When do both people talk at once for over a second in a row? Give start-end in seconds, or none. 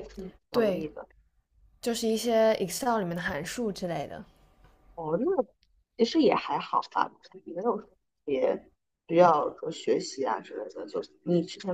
none